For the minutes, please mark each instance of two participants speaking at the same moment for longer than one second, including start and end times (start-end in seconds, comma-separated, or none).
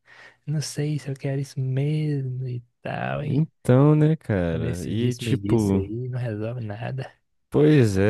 4.6-5.8